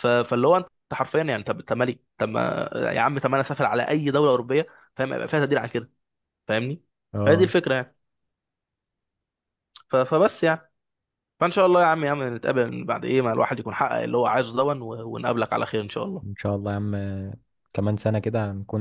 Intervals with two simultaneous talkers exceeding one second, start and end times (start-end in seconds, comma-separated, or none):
none